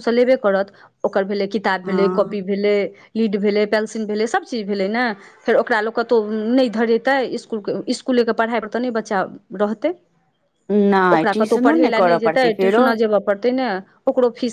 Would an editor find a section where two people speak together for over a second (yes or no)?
yes